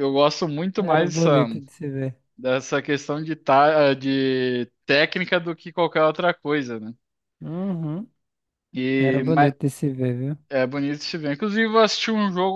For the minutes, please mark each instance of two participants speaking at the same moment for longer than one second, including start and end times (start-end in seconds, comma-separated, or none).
none